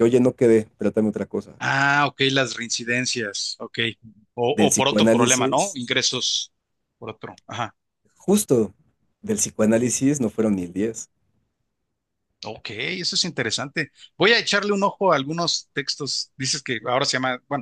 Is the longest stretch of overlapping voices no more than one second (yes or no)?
no